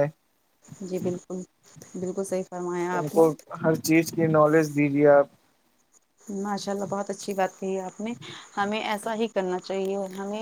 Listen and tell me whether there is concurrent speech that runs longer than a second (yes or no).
no